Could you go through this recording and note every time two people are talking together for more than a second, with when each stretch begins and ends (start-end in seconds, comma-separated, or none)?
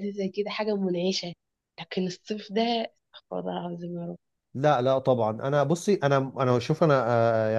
none